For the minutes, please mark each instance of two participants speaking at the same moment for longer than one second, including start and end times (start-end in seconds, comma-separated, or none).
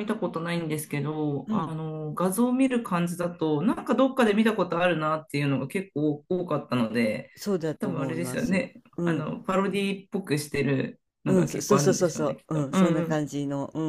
7.8-9.3, 11.3-13.2